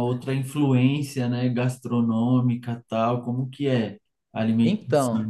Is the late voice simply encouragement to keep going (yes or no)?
no